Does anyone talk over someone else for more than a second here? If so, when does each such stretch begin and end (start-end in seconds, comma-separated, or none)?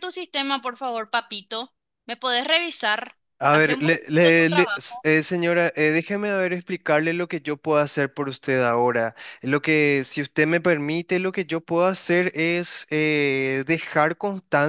3.4-5.0